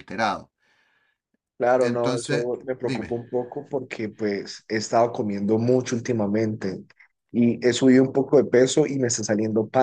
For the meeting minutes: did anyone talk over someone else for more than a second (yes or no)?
yes